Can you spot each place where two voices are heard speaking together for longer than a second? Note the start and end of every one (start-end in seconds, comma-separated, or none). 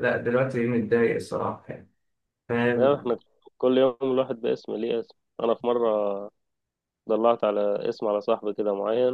none